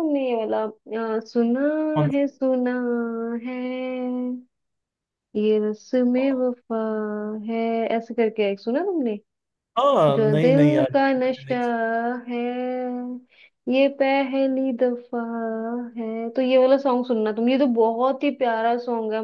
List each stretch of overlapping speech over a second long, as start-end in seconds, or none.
10.1-11.6